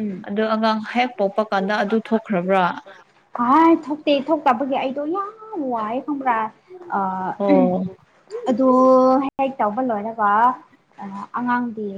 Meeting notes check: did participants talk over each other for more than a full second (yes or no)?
no